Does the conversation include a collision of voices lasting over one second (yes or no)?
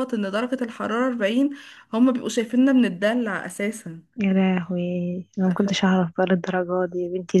no